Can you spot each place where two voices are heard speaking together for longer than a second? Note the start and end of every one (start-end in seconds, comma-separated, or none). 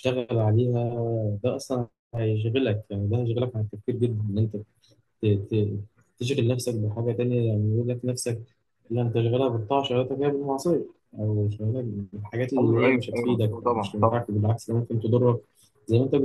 12.6-14.3